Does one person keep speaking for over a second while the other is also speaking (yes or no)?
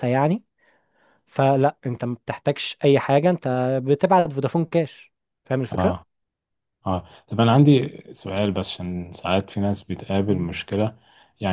no